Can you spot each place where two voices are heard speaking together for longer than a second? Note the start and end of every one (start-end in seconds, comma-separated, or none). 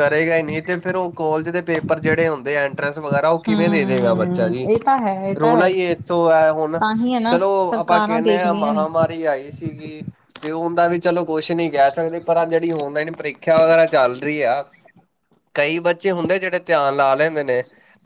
7.3-8.8